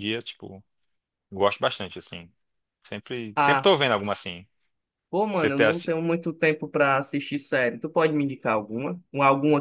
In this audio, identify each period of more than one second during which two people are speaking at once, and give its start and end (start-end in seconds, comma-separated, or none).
none